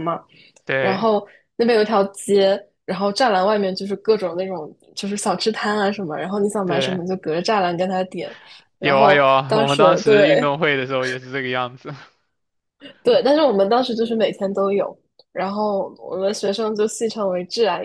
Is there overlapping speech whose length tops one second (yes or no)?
yes